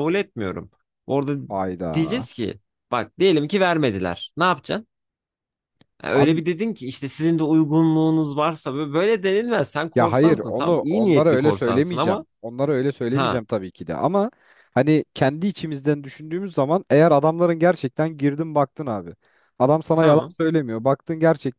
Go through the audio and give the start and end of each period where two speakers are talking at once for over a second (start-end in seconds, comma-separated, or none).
9.9-12.2